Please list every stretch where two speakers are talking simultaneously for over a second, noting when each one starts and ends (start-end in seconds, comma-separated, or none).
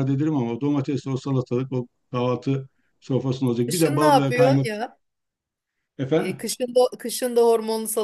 3.7-4.9